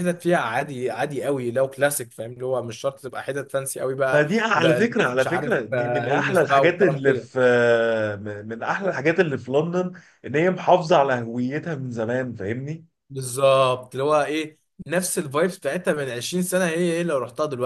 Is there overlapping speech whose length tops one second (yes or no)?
yes